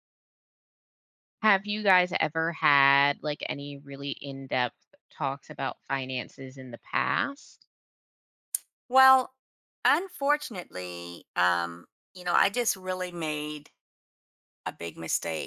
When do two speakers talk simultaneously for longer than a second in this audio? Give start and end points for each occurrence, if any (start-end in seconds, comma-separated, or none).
none